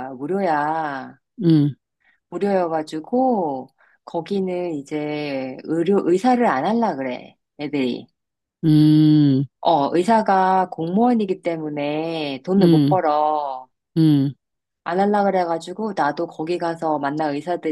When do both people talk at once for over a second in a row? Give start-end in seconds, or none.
none